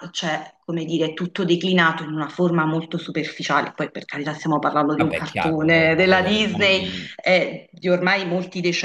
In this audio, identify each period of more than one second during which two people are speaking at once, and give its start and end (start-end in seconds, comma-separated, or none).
5.0-7.1